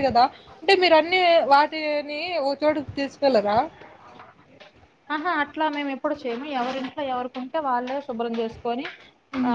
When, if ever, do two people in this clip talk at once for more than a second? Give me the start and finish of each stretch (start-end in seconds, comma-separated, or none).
none